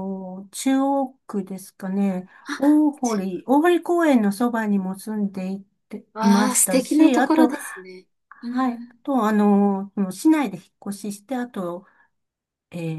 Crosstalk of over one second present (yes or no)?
yes